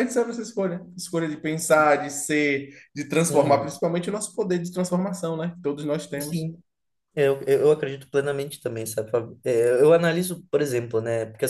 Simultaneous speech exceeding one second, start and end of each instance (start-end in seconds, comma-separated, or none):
none